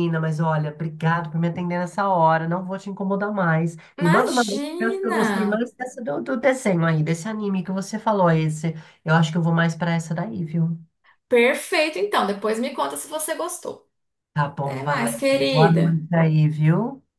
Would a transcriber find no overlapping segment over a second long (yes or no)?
no